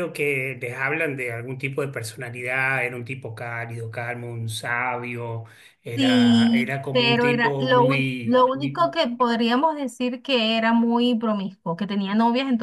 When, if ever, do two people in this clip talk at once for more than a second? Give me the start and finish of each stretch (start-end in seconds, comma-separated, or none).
6.0-8.9